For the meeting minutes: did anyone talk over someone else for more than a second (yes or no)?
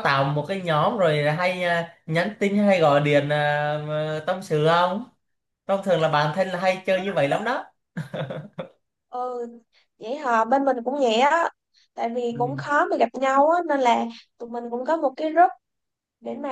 no